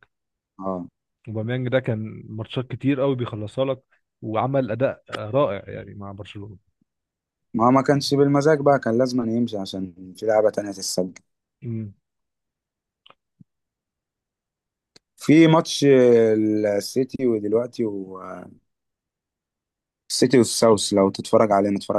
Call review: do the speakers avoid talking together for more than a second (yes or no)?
yes